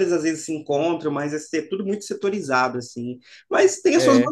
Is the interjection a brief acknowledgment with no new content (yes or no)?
yes